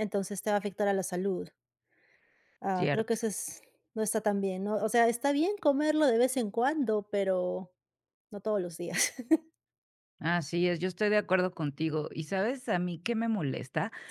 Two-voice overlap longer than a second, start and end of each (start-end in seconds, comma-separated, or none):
none